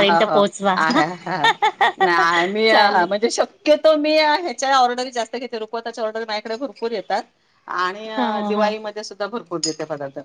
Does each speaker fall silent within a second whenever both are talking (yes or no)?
yes